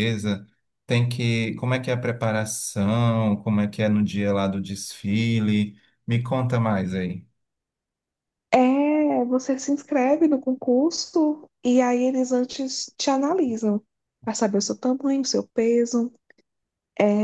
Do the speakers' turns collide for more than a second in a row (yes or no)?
no